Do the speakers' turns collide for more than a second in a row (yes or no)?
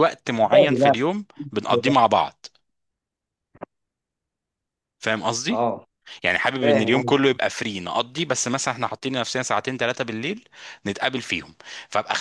no